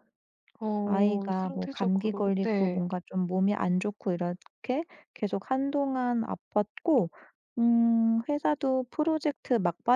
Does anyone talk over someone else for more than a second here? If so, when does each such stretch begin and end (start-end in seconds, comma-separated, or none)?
0.8-2.8